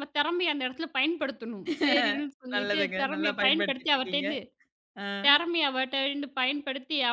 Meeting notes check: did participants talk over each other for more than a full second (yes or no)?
yes